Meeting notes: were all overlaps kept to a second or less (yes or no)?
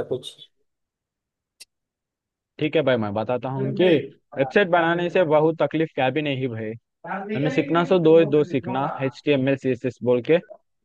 no